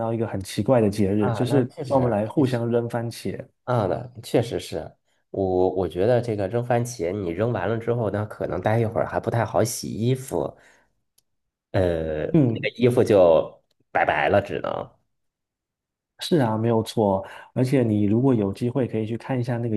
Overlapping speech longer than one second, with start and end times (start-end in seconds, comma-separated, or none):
1.2-2.6